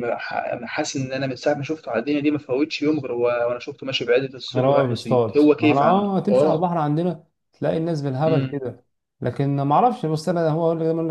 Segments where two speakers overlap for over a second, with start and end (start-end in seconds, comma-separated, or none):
4.5-6.7